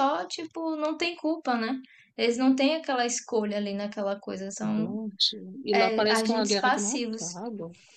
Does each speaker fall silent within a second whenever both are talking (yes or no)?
no